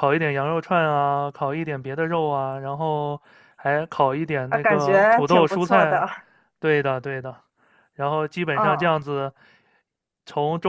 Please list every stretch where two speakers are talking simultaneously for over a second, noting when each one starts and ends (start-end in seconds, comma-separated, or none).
4.5-6.0